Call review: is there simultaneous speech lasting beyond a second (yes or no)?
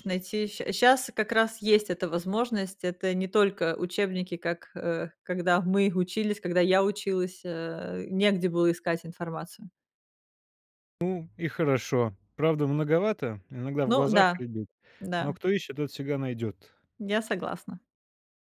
no